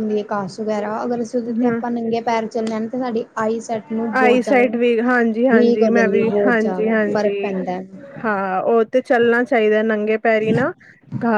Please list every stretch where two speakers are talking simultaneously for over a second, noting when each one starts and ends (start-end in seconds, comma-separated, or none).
4.2-7.4